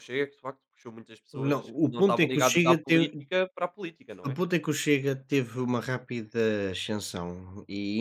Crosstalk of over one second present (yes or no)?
yes